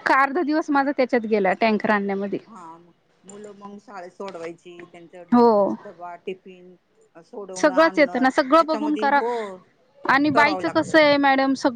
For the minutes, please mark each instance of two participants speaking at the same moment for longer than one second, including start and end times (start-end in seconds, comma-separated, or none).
7.6-9.2